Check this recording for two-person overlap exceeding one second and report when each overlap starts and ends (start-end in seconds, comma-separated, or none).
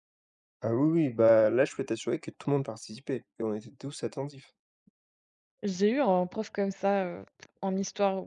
none